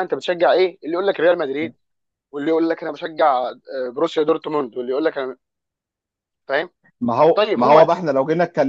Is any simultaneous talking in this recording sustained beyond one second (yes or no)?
no